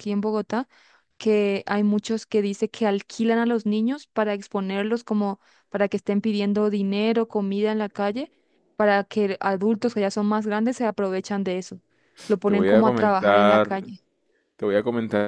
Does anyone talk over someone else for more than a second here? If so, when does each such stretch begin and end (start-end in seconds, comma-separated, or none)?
12.4-13.9